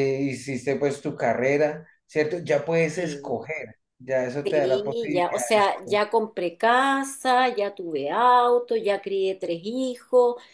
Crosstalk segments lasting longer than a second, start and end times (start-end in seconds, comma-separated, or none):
4.4-6.2